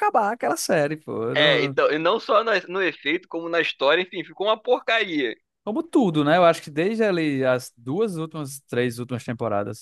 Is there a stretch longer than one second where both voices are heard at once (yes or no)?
no